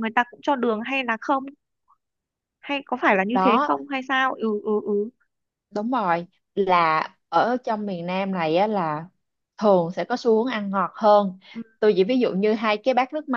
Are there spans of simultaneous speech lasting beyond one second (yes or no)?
no